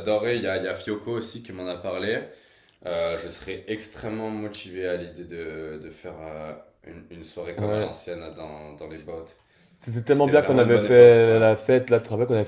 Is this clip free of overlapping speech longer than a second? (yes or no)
no